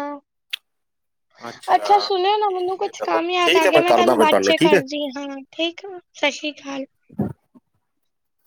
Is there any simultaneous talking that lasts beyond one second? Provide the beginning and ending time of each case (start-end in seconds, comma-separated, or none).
2.5-4.7